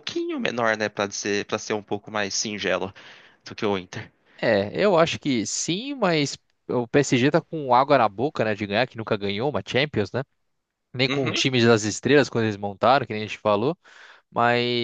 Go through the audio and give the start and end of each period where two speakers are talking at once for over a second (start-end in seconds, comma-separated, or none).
none